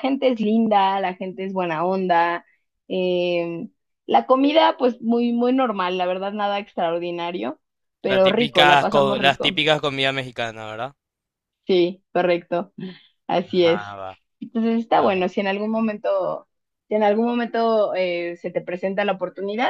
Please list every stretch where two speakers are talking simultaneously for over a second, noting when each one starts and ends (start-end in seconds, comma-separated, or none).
8.1-9.6